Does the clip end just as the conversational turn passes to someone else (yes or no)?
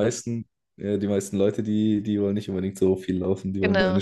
no